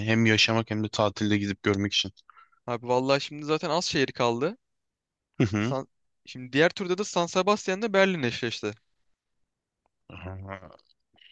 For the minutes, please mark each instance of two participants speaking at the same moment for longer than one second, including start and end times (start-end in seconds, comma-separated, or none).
none